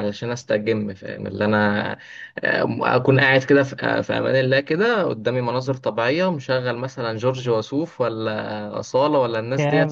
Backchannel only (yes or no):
yes